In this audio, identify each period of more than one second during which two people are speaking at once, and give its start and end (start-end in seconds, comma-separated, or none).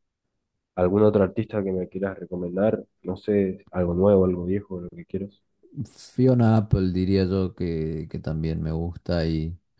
none